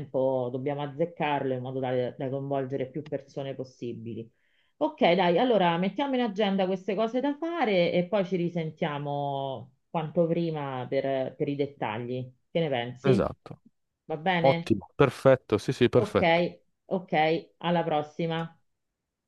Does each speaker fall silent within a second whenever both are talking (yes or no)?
yes